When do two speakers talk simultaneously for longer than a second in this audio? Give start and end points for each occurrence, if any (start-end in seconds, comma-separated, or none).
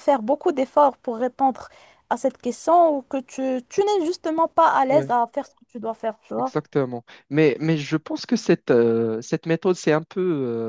none